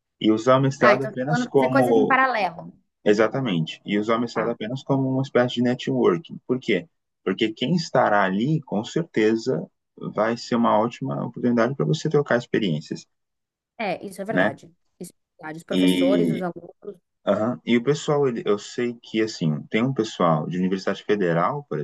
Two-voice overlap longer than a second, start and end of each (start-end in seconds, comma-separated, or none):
0.8-2.2